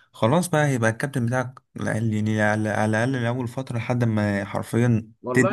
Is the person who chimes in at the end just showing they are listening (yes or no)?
no